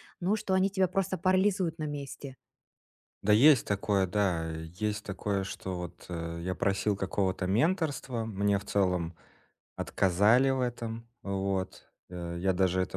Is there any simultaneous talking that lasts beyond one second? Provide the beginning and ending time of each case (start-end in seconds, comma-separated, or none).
none